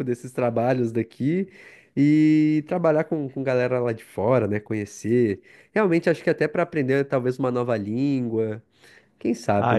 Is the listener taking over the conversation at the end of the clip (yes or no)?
yes